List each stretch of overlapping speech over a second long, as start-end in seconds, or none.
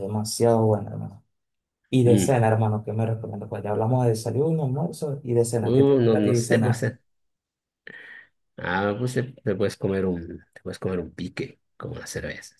5.6-6.9